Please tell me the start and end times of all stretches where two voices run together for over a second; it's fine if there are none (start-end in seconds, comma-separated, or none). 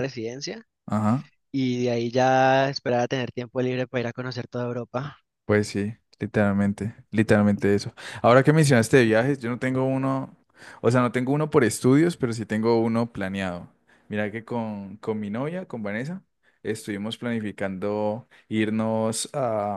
none